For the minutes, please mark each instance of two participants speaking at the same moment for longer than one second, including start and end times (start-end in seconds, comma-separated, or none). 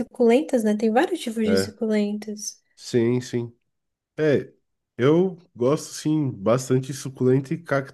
none